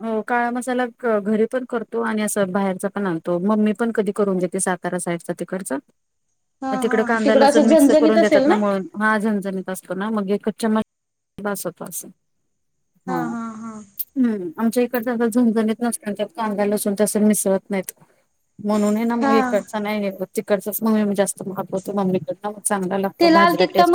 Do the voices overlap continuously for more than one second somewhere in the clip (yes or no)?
yes